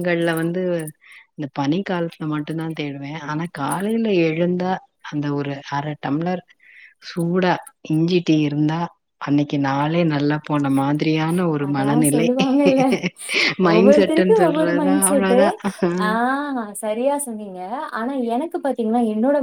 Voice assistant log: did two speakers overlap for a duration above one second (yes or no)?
yes